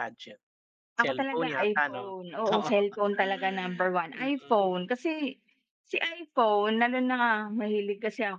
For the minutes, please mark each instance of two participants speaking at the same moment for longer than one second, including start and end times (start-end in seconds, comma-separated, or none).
1.0-2.7